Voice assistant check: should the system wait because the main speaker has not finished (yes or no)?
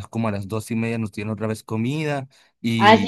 no